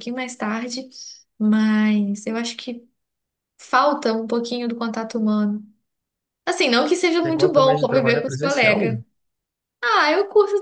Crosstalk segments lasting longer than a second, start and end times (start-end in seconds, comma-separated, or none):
7.2-8.9